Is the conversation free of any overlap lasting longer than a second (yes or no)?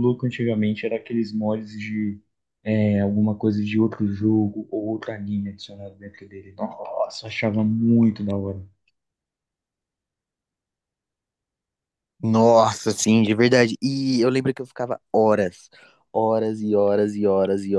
yes